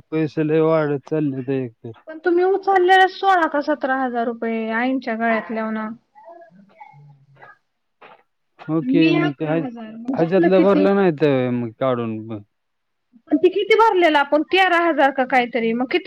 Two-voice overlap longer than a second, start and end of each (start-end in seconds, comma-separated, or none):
8.9-10.8